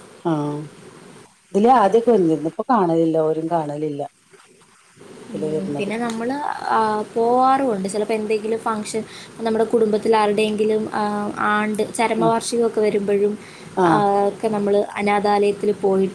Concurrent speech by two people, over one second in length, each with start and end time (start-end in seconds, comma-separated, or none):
none